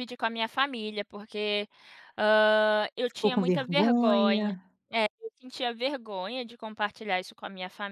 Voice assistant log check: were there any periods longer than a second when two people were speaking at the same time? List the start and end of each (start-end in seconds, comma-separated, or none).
3.1-4.6